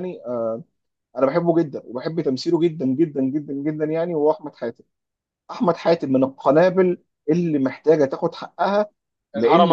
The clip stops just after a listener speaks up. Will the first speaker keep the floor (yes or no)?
yes